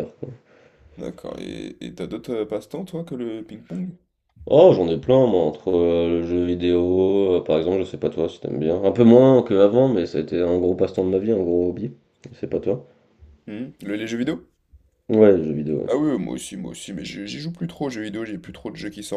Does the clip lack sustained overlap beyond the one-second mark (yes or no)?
yes